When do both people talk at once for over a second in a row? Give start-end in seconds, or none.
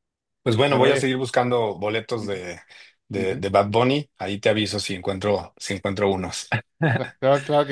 none